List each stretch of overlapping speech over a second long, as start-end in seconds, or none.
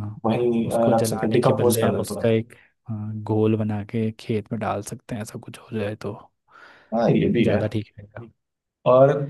0.7-2.3